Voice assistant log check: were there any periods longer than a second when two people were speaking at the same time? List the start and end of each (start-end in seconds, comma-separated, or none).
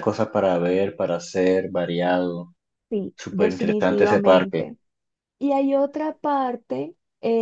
3.1-4.7